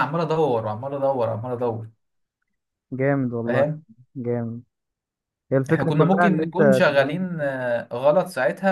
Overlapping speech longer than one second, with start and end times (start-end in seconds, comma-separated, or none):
5.7-7.4